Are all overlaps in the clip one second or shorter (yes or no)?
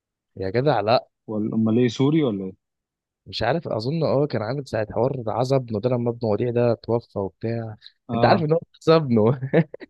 yes